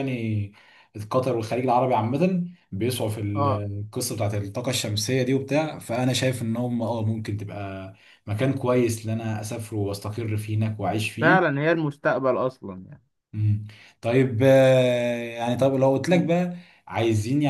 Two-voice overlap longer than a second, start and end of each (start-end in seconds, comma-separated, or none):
none